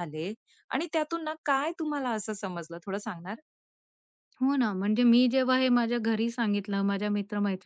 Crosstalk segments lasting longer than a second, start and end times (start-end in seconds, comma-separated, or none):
none